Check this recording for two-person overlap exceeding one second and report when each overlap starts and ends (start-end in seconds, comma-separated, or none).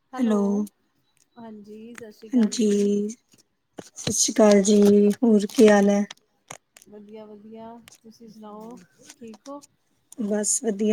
none